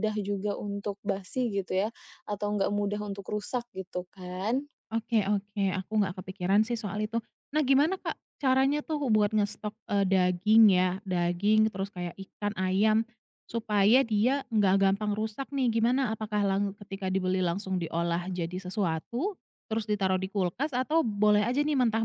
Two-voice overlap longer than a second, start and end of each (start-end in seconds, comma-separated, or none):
none